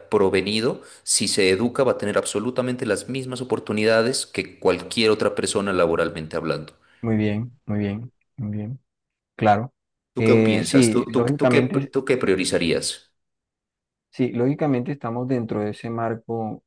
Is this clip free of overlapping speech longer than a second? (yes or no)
no